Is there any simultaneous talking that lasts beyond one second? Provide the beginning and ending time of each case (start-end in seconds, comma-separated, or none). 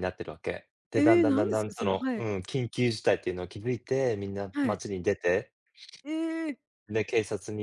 1.0-2.3